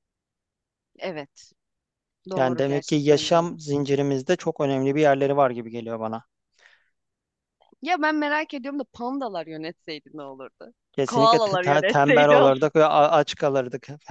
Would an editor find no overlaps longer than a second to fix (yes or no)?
no